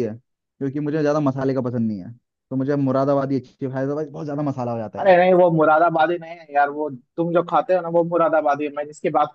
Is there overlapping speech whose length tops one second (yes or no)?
no